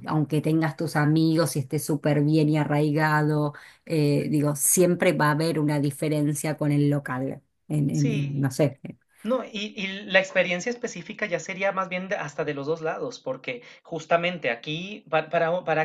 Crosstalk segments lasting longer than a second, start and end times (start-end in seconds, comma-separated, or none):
none